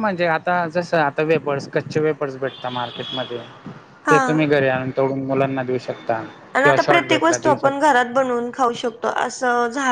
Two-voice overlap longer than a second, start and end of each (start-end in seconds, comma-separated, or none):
6.6-7.9